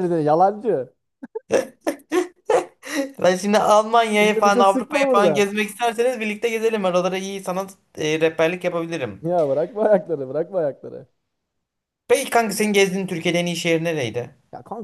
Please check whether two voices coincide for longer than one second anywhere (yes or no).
yes